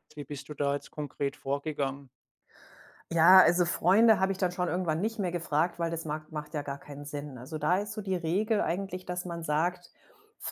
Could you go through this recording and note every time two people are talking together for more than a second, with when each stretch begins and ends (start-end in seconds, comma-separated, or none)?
none